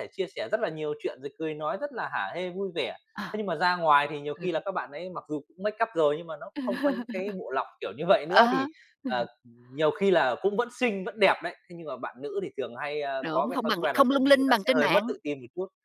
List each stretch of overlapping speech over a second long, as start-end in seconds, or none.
13.2-15.0